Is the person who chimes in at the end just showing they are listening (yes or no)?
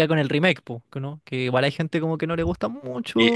no